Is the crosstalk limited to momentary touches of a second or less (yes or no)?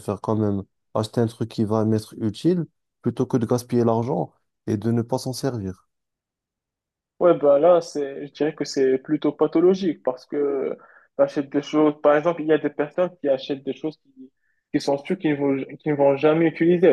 yes